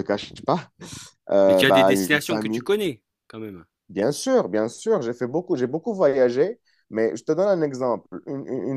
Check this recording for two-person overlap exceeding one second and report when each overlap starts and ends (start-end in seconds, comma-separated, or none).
1.4-2.7